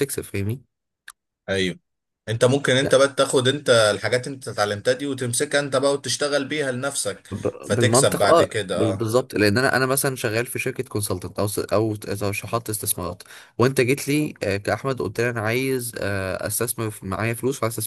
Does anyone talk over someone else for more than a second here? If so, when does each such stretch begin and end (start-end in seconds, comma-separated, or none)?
7.6-9.1